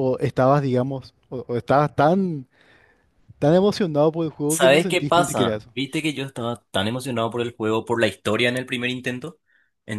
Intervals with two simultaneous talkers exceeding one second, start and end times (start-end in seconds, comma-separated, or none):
4.5-5.7